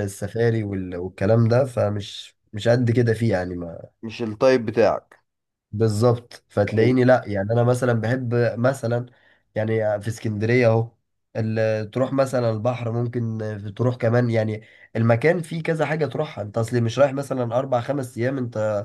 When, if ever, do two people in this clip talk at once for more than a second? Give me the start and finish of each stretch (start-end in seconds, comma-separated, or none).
none